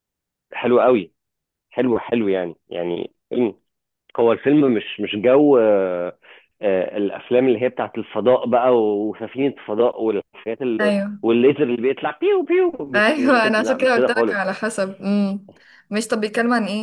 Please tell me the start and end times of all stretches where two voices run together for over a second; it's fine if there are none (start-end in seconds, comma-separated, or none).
12.9-14.4